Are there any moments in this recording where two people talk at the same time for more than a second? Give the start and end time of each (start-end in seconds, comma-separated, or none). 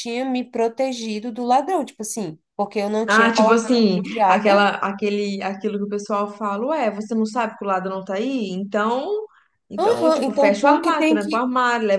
3.0-4.7, 9.8-11.4